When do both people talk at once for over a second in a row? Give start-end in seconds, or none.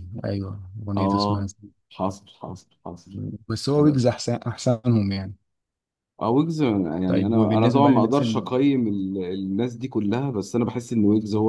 7.0-8.4